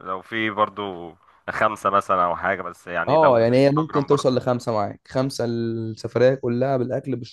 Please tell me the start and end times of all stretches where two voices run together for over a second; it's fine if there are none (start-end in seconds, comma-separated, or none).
3.1-4.3